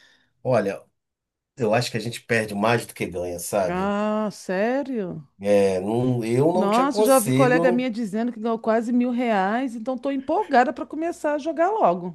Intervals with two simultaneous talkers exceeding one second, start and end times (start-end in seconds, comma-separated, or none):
6.5-7.9